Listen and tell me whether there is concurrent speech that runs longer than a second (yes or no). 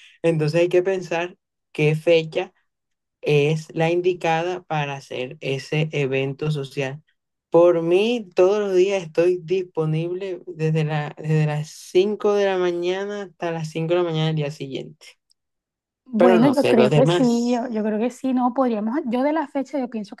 yes